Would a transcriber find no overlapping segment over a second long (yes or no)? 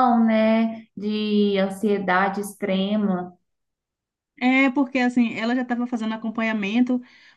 yes